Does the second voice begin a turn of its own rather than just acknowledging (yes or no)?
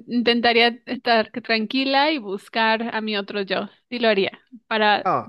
no